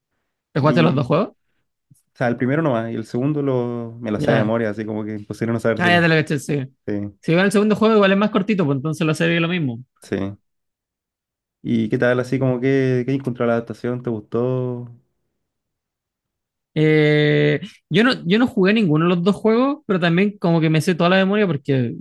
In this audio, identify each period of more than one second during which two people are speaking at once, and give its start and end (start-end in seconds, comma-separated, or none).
none